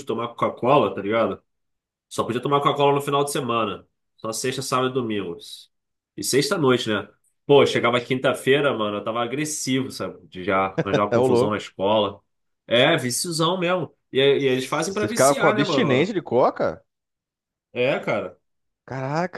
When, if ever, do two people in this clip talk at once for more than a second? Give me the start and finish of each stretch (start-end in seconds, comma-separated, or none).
14.9-16.1